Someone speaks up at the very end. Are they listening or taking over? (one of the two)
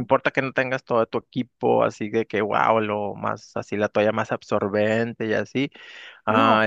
listening